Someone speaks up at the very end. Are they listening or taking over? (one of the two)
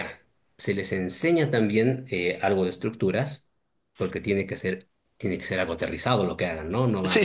taking over